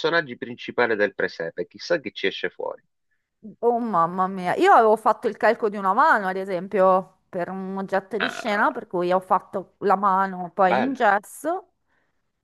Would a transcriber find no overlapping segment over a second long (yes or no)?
yes